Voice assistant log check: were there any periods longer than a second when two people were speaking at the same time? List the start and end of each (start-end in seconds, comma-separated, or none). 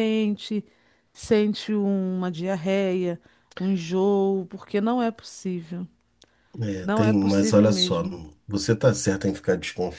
6.8-8.0